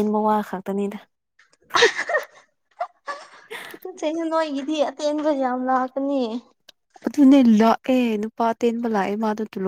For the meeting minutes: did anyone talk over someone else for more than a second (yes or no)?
no